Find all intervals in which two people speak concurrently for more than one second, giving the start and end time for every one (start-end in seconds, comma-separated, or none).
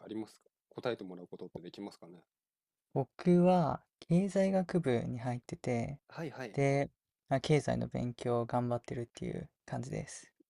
none